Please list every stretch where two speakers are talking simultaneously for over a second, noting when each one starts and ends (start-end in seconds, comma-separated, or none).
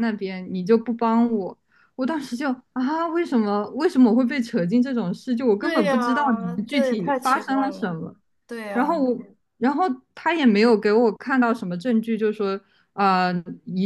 5.6-8.0